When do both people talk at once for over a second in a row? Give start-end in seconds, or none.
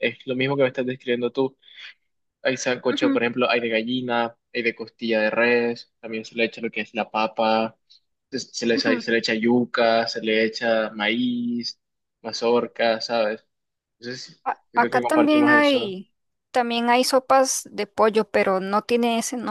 14.4-16.0